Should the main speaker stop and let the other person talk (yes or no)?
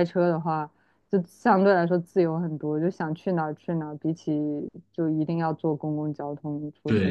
yes